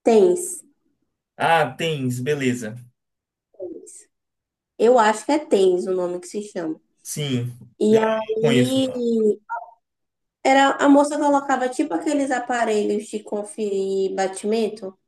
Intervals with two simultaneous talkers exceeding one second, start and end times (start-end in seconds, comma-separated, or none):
7.8-9.1